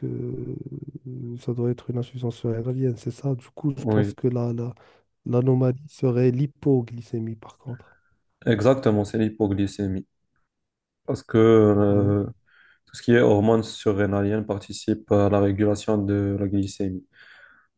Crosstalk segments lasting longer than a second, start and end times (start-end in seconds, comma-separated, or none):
none